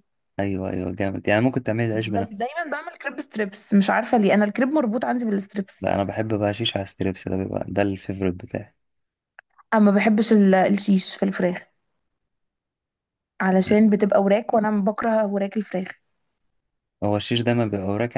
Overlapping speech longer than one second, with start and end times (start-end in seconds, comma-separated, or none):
none